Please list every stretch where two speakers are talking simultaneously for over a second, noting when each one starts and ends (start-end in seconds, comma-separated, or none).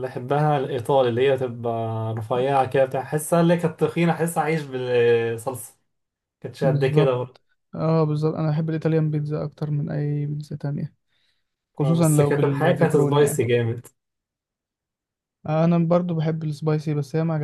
11.8-13.4